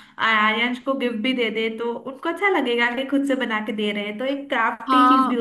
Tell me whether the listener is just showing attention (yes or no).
no